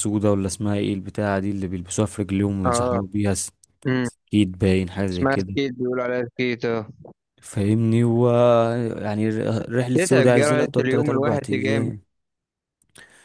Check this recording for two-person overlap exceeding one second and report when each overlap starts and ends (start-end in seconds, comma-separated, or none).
10.0-11.9